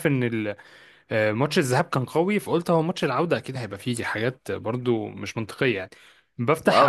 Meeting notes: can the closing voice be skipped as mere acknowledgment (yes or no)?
yes